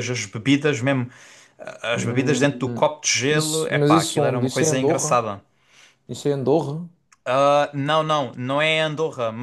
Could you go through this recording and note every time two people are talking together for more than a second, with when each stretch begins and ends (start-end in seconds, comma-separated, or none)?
3.3-5.2